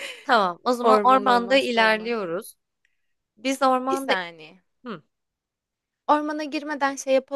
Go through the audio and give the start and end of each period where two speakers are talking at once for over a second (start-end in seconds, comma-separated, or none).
0.8-2.1